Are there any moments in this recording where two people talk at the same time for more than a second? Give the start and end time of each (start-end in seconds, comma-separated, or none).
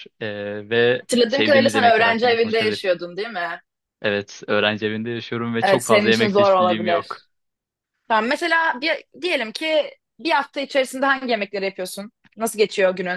1.0-2.8, 5.6-7.2